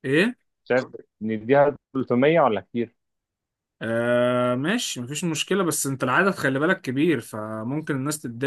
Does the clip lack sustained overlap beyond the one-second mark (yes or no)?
yes